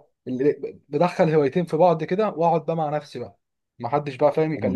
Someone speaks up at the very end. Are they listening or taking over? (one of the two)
taking over